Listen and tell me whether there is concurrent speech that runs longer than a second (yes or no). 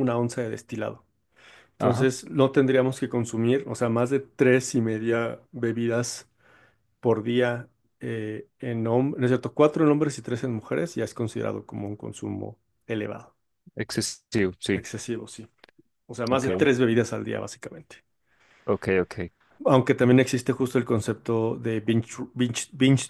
no